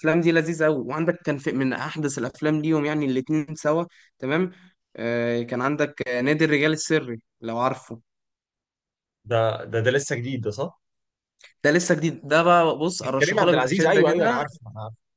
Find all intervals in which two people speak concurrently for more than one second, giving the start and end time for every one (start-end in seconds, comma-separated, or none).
13.2-14.4